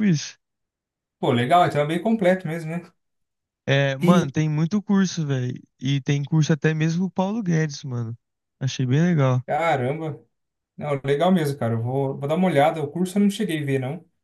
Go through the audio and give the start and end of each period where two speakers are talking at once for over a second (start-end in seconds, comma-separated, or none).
none